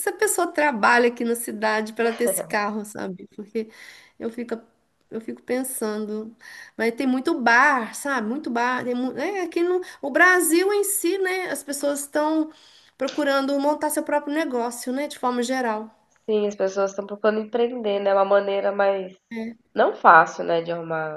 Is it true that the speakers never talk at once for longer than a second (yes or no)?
yes